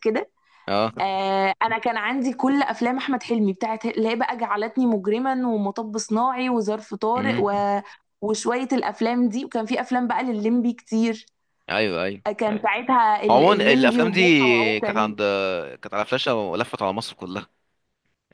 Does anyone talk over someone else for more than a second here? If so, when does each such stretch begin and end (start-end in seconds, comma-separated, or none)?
13.3-15.2